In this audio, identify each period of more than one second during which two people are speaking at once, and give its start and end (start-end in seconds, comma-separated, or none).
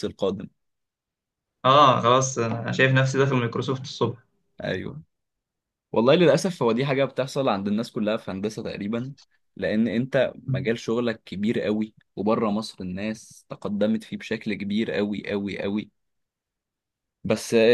none